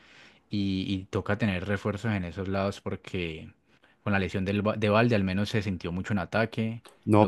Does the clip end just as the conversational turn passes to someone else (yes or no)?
yes